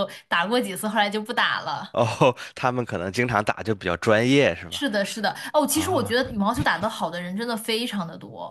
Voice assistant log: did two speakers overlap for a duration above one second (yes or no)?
no